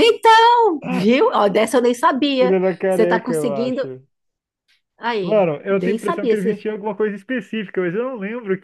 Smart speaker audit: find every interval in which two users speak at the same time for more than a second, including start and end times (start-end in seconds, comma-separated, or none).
2.4-3.9, 5.2-6.7